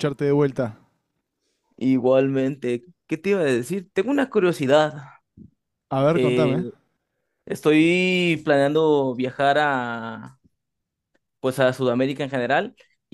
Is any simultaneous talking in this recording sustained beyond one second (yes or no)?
no